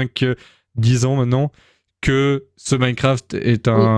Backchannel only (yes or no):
no